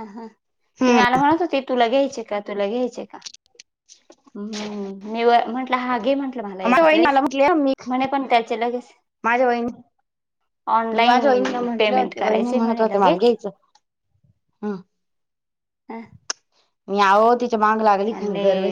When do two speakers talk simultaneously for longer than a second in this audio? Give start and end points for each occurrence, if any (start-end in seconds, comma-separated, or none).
11.5-13.3